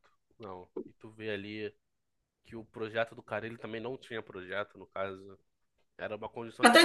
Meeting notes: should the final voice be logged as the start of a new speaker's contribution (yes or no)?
yes